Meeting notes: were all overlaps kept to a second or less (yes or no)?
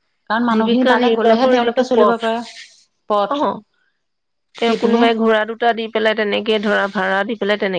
no